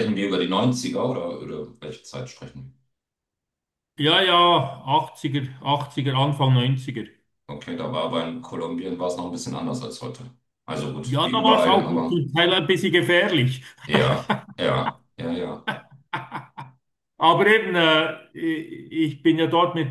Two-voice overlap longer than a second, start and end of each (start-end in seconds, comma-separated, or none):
11.0-12.2